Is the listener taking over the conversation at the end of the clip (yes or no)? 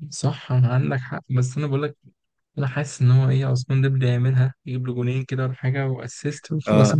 yes